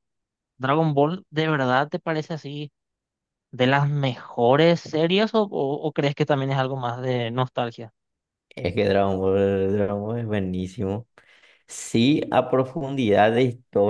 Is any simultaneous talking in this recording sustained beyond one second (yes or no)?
no